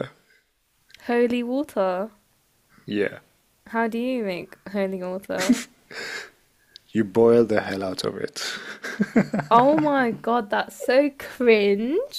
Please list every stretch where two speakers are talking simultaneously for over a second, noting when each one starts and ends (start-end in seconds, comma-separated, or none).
none